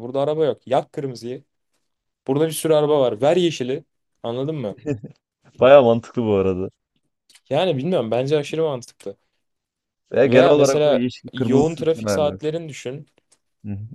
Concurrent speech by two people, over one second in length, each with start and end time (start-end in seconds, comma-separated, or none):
10.2-12.4